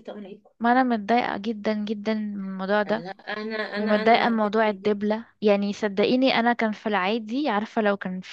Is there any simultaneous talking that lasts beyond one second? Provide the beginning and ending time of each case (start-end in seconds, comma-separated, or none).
3.8-5.2